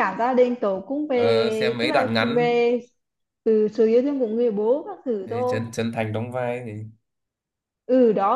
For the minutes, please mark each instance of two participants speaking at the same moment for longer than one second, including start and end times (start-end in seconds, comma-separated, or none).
1.1-2.5